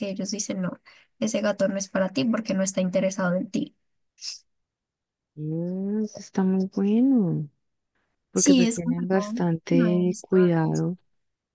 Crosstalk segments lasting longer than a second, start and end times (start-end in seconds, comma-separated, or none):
8.3-10.8